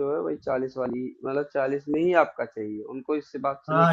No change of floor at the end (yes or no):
no